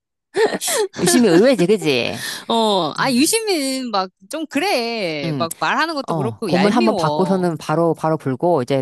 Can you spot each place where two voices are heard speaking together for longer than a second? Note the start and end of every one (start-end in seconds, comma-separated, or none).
6.1-7.5